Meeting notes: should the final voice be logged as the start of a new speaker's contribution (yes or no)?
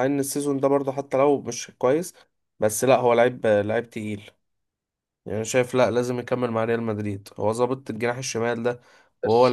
yes